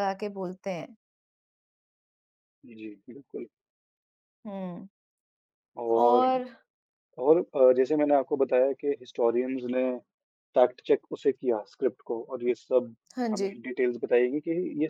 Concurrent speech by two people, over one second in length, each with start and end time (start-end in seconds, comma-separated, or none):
none